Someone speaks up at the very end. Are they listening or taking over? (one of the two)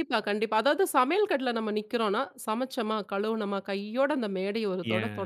taking over